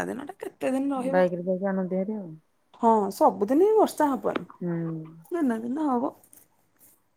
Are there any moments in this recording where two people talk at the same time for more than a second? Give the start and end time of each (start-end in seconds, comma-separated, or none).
none